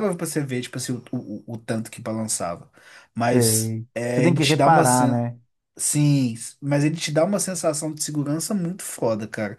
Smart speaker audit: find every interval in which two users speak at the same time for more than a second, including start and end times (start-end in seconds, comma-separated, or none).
3.3-5.3